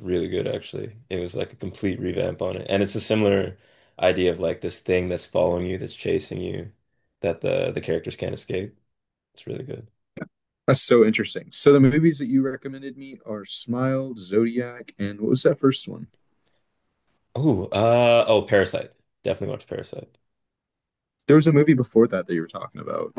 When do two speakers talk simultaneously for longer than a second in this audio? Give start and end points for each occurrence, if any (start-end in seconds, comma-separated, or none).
none